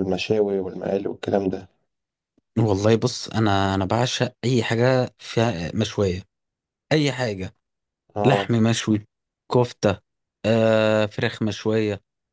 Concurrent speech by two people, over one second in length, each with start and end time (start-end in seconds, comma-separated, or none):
none